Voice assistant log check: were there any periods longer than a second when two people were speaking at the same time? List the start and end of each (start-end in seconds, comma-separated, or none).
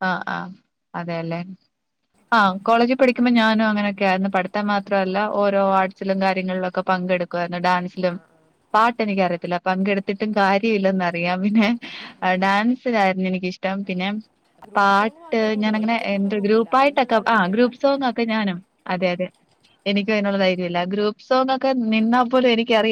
14.8-17.7